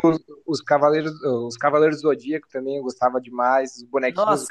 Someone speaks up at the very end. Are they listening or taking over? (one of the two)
taking over